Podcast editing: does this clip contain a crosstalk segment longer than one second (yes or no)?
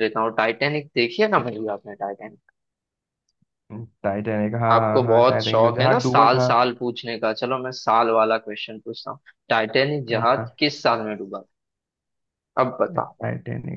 yes